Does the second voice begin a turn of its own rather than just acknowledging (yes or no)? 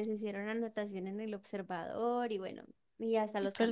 no